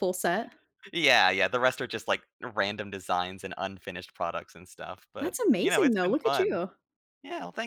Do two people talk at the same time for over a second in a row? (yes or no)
yes